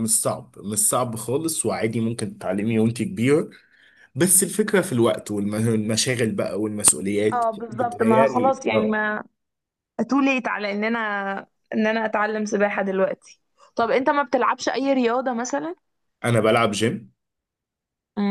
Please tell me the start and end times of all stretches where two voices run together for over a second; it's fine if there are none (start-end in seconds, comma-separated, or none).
7.3-9.0